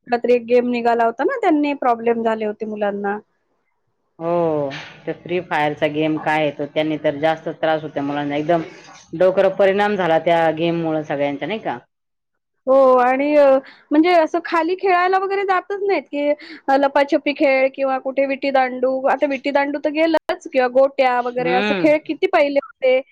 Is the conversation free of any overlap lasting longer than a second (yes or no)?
yes